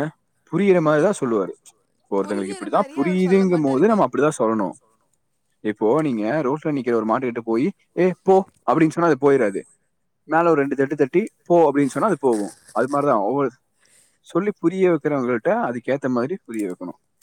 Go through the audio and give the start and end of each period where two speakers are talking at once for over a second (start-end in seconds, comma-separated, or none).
2.2-4.0